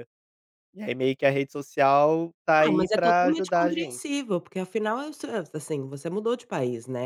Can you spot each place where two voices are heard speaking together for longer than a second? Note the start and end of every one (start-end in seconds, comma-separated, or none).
2.6-4.0